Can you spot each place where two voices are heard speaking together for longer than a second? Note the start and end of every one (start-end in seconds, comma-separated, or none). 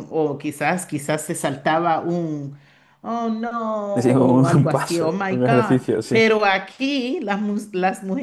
3.9-6.2